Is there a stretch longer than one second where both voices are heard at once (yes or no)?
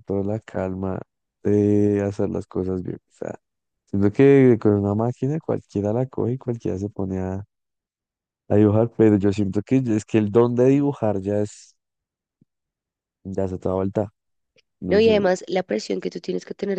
no